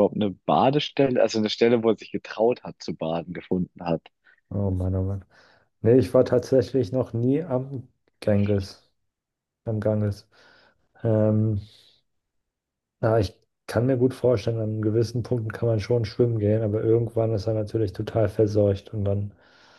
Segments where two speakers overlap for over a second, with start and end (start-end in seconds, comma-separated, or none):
none